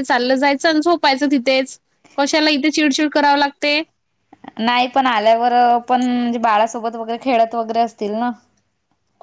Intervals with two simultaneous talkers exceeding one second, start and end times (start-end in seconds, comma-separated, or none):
none